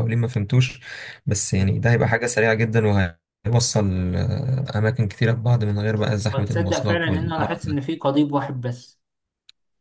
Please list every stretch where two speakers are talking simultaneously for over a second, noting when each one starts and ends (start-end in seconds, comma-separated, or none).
6.3-7.8